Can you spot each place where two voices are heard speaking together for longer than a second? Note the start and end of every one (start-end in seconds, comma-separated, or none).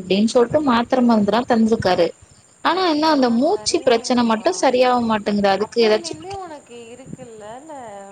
2.7-4.5